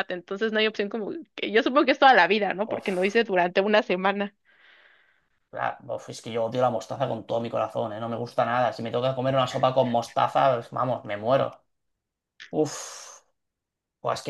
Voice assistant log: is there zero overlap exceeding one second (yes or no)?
yes